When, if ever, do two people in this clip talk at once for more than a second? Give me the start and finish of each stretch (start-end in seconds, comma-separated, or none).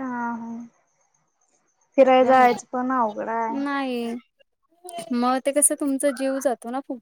none